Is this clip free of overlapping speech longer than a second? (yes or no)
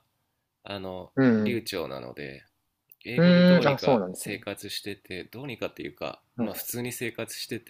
no